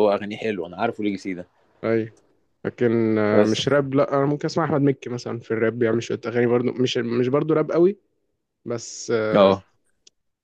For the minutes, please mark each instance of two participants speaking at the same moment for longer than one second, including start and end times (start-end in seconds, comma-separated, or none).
none